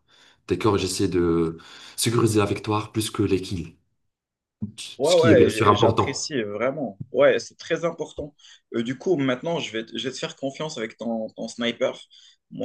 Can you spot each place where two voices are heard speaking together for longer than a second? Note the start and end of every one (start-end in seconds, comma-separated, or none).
5.0-6.2